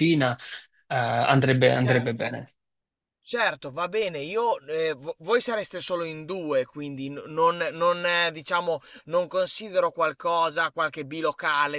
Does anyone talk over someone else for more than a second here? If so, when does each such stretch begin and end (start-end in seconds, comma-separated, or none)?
none